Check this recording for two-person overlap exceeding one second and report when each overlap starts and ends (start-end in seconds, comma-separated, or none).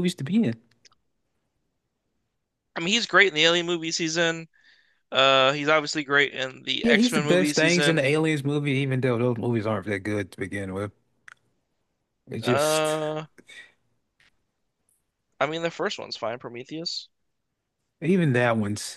6.8-8.1